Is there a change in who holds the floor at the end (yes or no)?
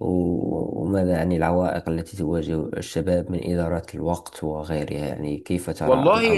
yes